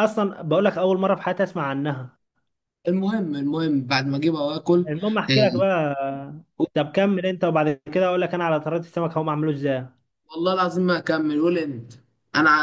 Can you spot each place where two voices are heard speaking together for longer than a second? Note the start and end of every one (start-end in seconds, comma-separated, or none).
none